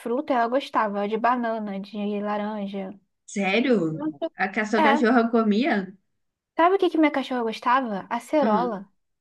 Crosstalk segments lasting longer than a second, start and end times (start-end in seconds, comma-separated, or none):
none